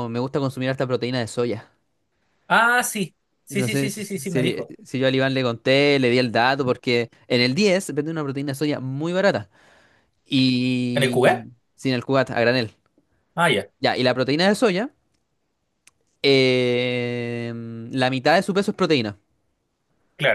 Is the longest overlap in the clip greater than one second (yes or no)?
yes